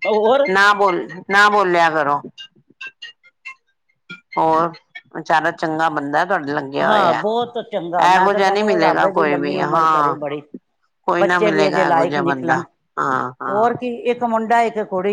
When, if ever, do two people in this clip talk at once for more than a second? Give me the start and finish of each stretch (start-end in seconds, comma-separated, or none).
8.1-10.2, 11.2-12.6